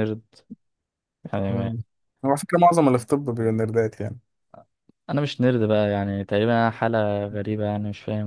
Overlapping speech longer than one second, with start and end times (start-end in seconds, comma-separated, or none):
none